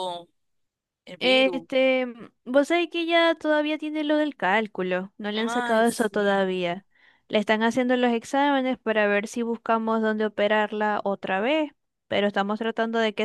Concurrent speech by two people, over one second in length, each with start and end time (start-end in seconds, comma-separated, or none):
5.3-6.6